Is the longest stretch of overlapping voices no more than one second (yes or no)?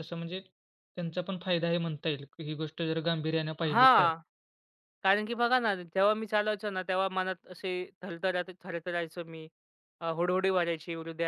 yes